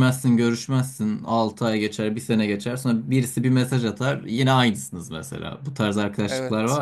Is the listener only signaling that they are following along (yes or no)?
yes